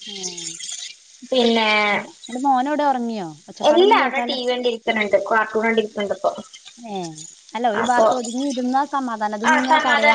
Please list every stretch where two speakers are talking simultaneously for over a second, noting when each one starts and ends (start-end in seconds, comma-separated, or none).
none